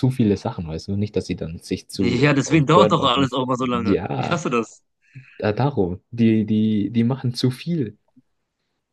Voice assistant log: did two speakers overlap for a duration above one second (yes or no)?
yes